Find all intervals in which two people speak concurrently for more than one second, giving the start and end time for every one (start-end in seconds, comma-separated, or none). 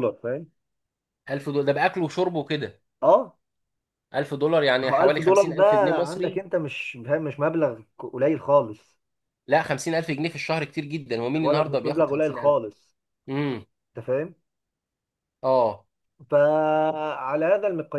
4.8-6.4, 11.3-12.6